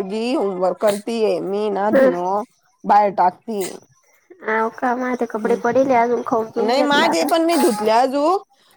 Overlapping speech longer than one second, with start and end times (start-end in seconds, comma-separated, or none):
5.4-7.2